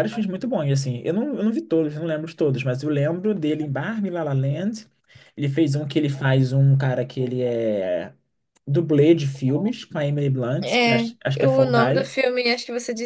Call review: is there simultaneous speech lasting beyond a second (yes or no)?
yes